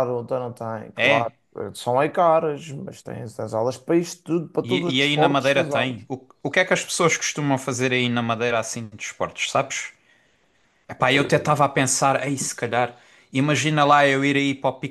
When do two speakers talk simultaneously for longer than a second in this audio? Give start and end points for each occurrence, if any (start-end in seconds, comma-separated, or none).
4.6-6.0